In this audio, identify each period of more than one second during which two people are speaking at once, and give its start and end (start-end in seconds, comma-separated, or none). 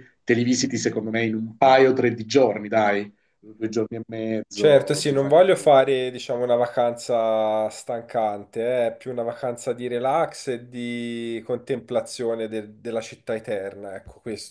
4.5-5.7